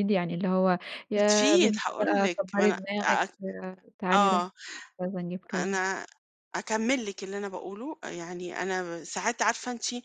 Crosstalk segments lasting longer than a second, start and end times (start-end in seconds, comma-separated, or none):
1.1-3.3